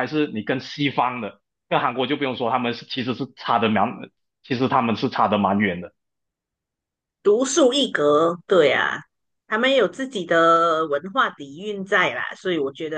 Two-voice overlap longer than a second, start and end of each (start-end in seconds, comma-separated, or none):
none